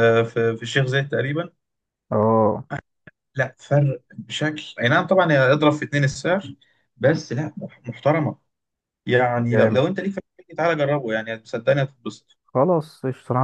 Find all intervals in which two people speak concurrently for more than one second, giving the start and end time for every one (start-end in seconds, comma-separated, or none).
none